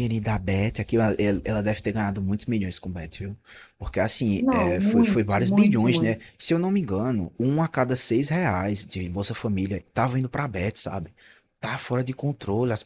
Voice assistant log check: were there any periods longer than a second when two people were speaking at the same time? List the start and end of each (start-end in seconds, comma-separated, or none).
4.4-6.2